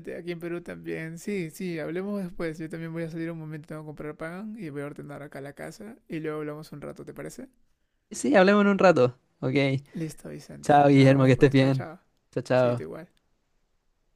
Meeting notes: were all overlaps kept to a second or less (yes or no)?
no